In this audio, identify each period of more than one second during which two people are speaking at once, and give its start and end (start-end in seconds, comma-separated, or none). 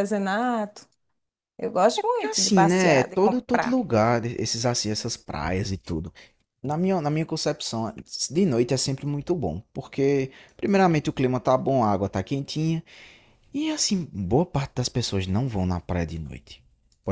2.2-3.8